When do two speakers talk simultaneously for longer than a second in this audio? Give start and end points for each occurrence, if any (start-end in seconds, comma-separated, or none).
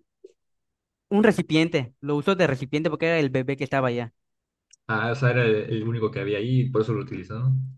none